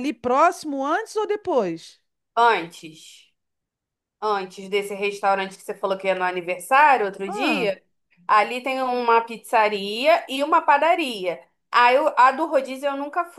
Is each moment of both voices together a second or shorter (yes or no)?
yes